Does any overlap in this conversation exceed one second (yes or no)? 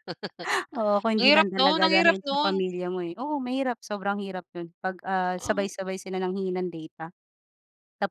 yes